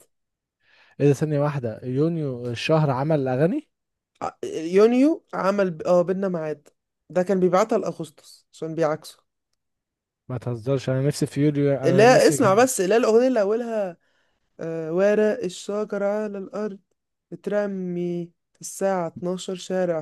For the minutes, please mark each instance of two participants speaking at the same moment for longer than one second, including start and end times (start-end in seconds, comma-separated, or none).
none